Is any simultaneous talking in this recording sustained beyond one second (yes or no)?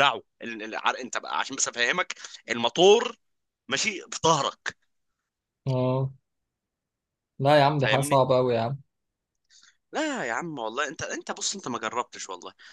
no